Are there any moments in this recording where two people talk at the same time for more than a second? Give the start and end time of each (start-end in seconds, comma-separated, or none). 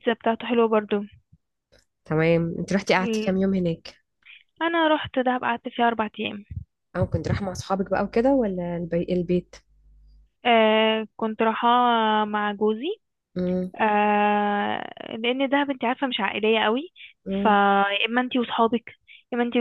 none